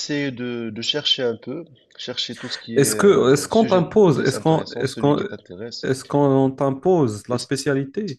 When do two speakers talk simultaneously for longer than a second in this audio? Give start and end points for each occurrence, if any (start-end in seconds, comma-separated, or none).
2.8-5.2